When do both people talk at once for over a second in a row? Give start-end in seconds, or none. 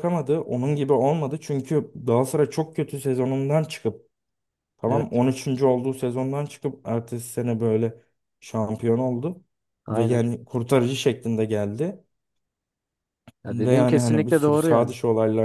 13.5-14.9